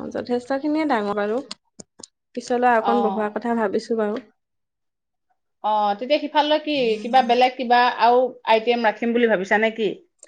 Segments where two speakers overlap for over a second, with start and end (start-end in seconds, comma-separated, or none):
none